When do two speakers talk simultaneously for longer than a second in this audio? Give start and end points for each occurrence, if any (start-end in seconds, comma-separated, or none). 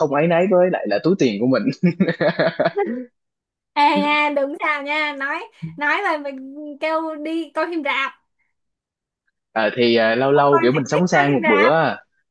10.3-11.7